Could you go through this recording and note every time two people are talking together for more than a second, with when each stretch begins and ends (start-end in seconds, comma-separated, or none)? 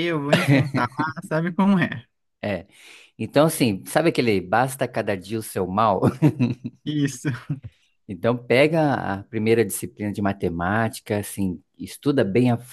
none